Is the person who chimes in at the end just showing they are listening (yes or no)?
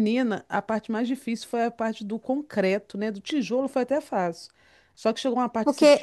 yes